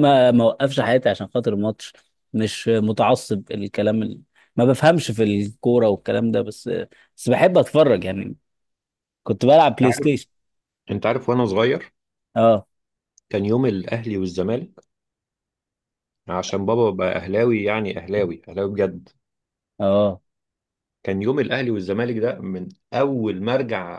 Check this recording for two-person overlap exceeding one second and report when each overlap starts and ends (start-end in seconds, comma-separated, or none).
none